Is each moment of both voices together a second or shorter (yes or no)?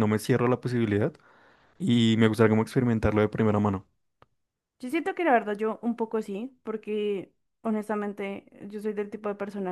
yes